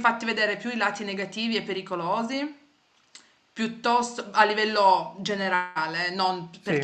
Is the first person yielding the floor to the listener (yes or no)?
no